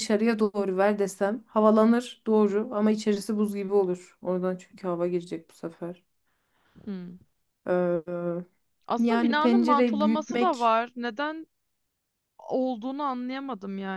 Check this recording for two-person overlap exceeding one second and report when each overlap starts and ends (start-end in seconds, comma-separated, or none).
9.0-10.7